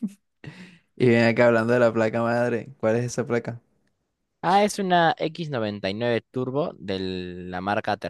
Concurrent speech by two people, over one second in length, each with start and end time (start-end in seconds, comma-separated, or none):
none